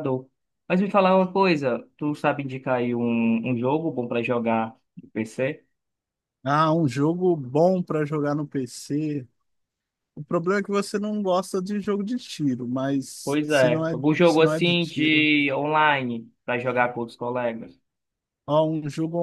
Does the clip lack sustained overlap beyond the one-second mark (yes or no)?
no